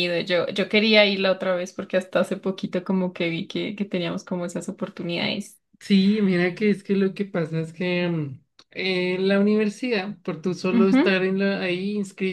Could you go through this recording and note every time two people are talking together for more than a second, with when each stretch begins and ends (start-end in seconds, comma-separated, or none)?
none